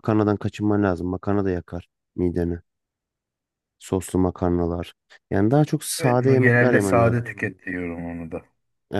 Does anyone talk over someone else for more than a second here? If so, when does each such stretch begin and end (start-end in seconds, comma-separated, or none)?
6.0-7.2